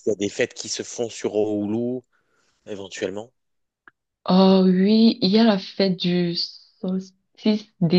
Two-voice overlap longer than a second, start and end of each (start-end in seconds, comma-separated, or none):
none